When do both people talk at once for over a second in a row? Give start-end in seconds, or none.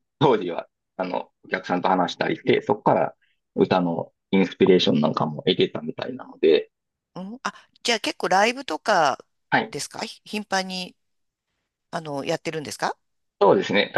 none